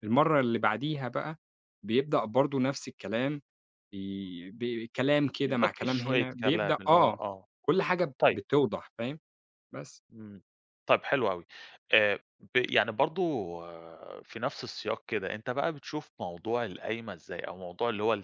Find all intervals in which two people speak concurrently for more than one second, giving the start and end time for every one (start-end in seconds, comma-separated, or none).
5.5-7.2